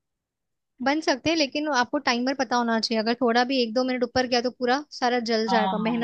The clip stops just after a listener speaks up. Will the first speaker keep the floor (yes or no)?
no